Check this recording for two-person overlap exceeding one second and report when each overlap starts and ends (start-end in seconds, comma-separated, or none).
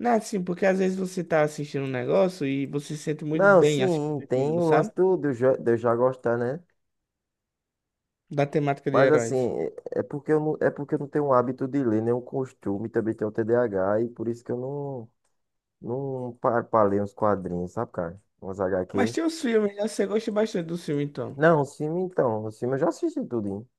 3.3-4.9